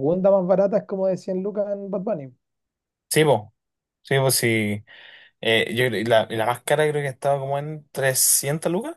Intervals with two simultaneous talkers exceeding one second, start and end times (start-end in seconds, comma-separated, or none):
none